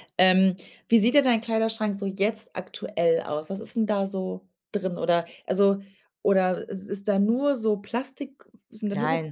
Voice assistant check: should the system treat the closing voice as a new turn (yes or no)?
no